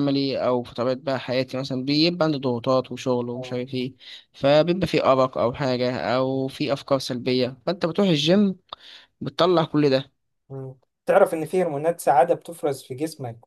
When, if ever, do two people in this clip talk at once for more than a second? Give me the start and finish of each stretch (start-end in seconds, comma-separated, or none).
none